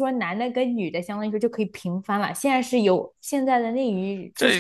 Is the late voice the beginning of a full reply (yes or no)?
yes